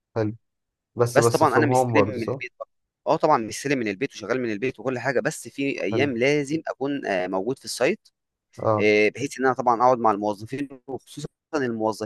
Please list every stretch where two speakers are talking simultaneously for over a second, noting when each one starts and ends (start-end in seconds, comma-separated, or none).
1.1-2.4